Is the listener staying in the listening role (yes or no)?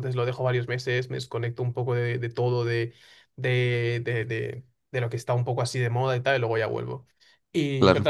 yes